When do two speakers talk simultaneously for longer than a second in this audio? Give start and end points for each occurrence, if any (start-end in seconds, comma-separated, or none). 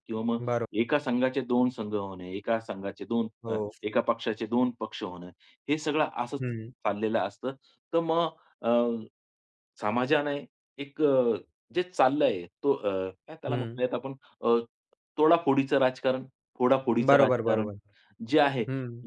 none